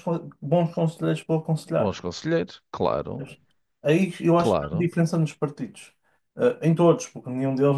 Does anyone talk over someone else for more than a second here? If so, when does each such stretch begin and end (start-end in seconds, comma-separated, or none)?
none